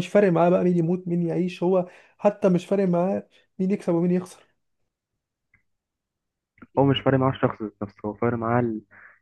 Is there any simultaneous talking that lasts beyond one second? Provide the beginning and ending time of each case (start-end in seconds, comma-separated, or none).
none